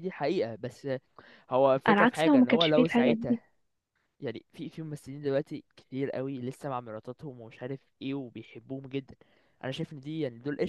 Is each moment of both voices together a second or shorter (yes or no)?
no